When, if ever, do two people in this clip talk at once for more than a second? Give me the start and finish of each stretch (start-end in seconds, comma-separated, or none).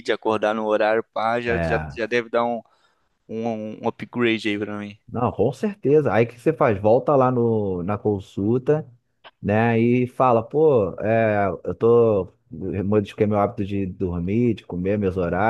none